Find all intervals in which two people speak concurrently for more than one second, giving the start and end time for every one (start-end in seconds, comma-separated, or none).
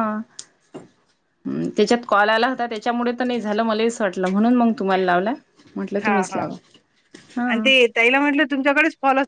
none